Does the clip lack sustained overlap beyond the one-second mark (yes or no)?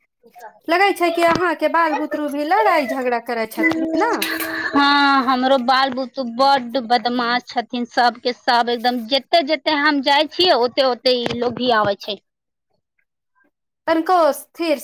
yes